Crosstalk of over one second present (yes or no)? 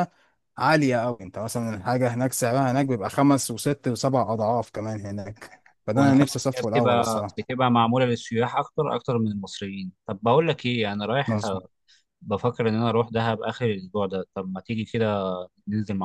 yes